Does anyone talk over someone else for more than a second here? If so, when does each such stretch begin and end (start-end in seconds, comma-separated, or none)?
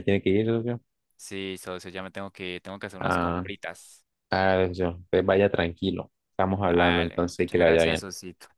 6.6-8.1